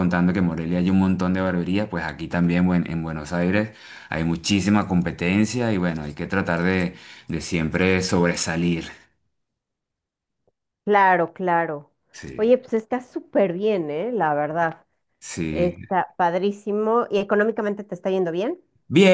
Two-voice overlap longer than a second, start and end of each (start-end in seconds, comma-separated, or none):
none